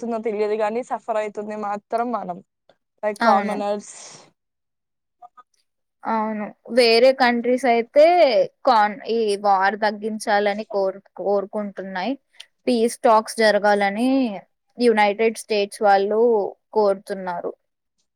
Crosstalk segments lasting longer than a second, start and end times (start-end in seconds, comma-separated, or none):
none